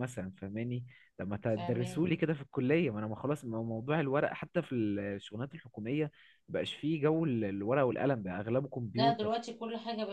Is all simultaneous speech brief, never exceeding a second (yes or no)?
yes